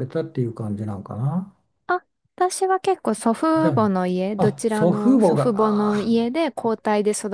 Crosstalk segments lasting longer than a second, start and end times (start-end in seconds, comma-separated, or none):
4.4-6.1